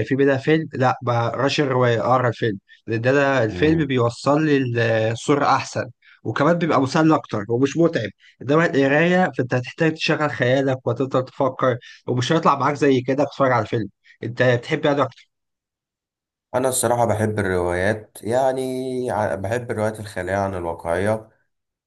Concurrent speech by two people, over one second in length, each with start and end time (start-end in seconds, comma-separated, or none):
none